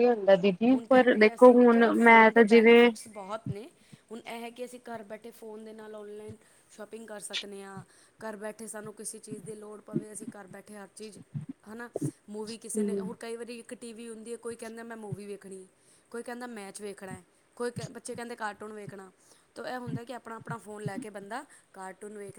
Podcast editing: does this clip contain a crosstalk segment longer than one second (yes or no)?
yes